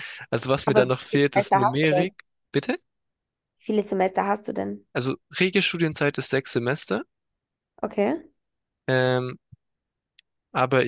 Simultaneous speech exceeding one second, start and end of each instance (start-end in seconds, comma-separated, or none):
0.7-2.1